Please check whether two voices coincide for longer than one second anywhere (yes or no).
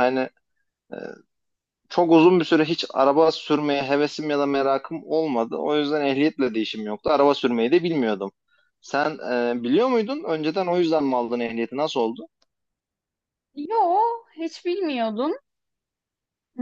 no